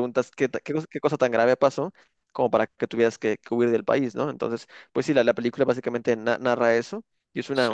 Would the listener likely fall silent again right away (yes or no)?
yes